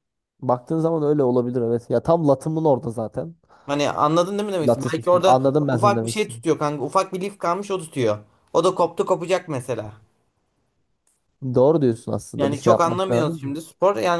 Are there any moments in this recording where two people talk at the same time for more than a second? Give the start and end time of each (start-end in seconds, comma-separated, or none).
4.6-6.4, 12.4-13.6